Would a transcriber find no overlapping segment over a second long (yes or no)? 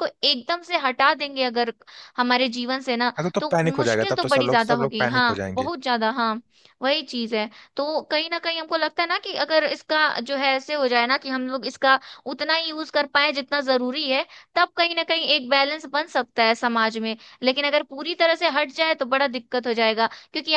no